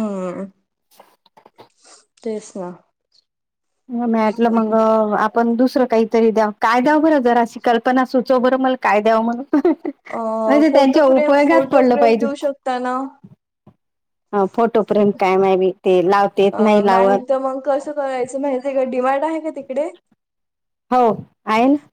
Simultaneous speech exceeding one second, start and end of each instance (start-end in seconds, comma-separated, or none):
10.7-12.3